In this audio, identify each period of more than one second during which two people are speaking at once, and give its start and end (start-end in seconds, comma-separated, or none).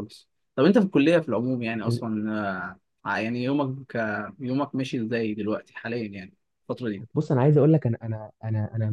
none